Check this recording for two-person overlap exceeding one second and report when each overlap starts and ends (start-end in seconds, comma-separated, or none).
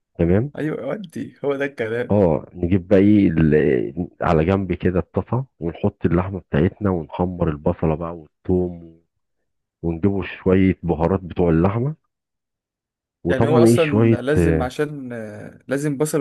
13.3-14.7